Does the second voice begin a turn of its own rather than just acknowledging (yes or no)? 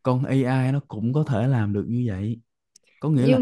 no